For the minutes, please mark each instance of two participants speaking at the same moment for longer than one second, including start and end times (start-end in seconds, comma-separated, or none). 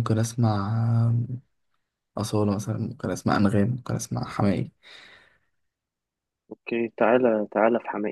none